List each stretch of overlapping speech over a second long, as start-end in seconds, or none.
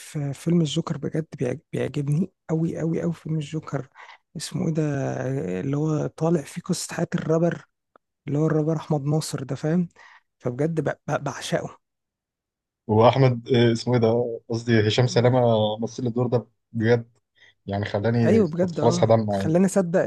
18.2-19.6